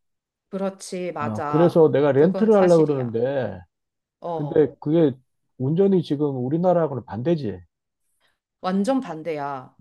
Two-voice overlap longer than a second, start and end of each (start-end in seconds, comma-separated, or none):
1.2-3.2